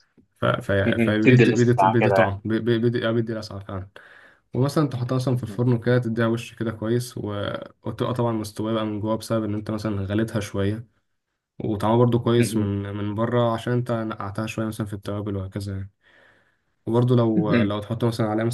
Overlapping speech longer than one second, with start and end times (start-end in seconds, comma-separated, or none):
0.8-2.4